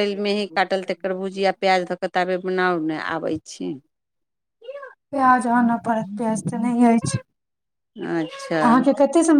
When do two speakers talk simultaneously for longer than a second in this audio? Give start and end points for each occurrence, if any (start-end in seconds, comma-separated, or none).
none